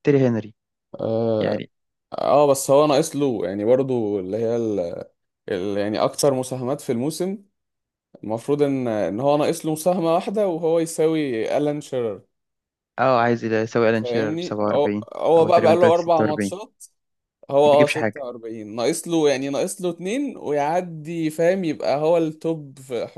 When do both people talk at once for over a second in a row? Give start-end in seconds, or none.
13.9-16.5